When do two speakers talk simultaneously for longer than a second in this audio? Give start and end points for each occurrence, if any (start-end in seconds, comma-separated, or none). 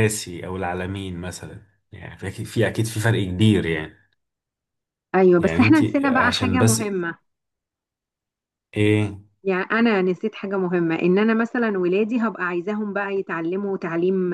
5.4-7.0